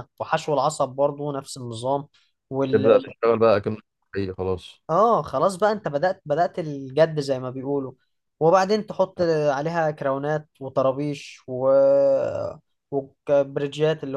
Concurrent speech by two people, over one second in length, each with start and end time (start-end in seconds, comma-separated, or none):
none